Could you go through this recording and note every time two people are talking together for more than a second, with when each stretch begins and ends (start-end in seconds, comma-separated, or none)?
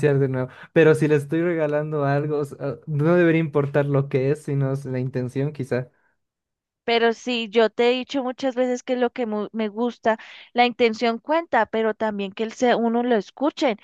none